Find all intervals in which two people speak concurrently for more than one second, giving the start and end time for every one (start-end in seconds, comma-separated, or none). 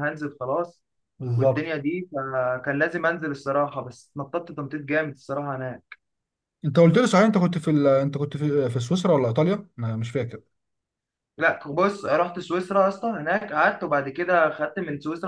none